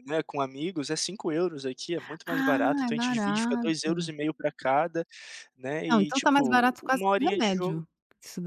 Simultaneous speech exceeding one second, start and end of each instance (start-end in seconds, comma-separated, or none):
2.3-4.1, 5.9-7.8